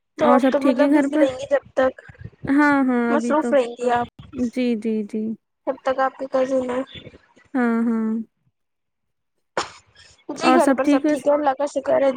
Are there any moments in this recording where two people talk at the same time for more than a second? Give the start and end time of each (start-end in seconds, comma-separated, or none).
none